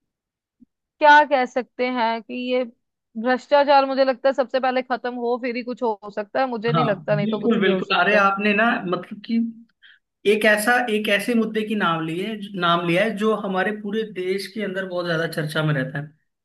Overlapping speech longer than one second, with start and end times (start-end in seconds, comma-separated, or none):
6.7-8.3